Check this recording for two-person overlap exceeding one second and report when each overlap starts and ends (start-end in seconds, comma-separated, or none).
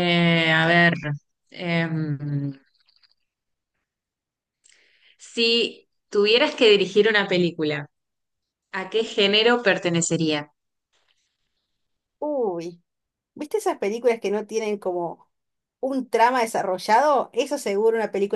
none